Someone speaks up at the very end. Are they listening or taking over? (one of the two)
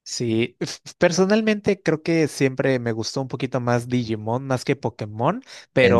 listening